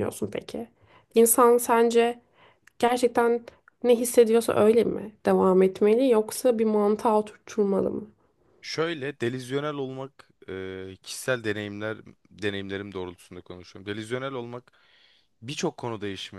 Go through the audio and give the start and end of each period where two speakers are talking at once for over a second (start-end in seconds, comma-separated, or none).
none